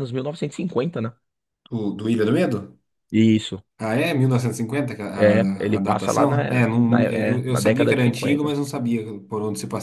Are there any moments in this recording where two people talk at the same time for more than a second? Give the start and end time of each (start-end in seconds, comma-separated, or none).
5.7-8.5